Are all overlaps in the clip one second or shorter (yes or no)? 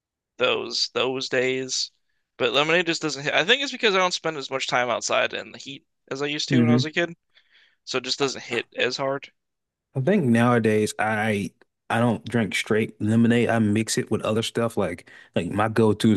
yes